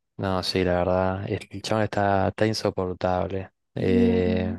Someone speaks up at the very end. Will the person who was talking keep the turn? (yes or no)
yes